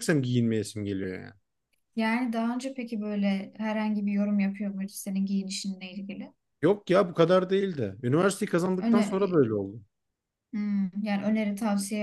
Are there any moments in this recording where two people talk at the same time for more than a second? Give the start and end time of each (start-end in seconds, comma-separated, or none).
none